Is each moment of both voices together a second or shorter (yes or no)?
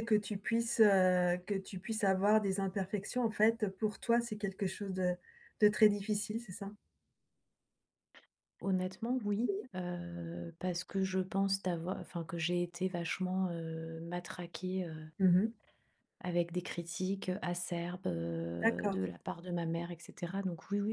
yes